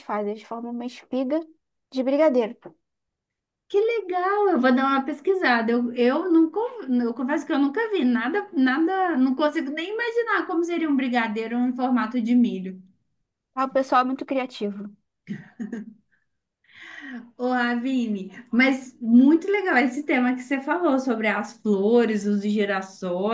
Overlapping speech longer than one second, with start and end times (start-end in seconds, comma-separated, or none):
none